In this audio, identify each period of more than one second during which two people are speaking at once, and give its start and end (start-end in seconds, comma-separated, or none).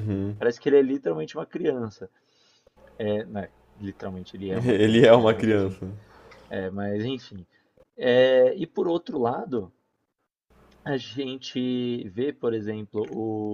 4.5-5.8